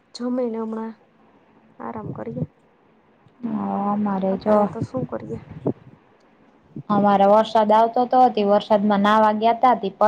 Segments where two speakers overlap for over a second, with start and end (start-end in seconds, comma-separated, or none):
none